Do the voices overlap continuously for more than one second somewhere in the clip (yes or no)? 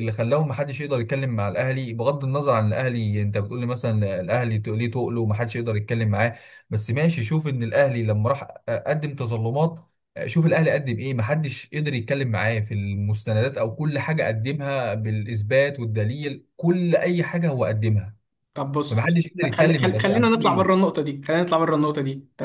yes